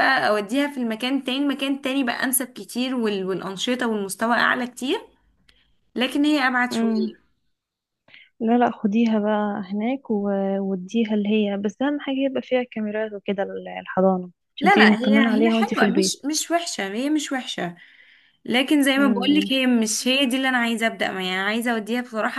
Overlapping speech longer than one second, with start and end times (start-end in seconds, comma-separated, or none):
14.6-16.2